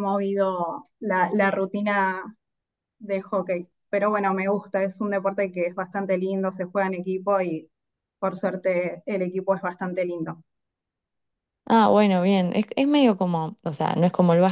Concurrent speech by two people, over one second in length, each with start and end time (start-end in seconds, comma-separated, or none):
none